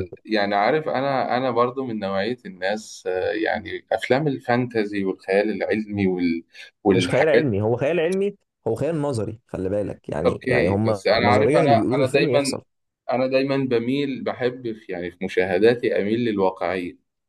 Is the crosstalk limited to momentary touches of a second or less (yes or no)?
no